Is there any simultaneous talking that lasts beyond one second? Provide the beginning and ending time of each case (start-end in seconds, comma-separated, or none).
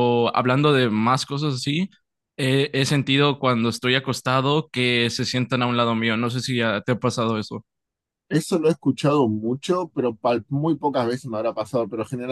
none